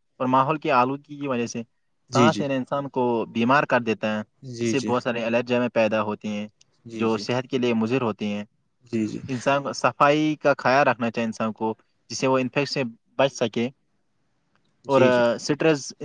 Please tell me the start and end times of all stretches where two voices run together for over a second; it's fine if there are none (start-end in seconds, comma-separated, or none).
none